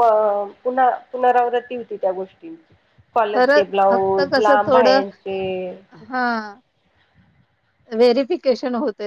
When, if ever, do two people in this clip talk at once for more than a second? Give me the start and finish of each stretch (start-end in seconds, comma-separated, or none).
3.3-5.0